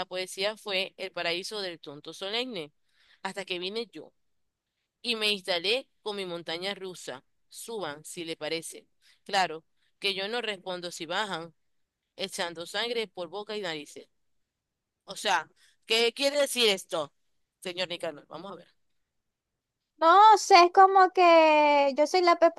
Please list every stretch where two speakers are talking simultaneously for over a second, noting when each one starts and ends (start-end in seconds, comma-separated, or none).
none